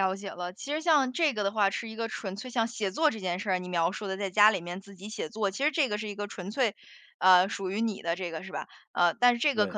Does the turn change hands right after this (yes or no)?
no